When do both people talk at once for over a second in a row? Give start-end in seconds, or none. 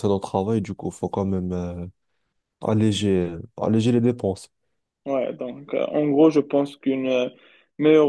none